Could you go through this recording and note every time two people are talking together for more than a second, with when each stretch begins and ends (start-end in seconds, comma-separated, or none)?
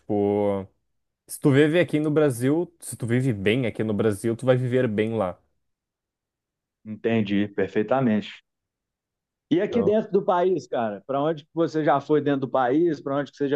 none